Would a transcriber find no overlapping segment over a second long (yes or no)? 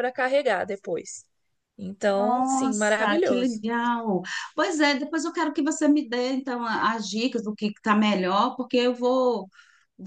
no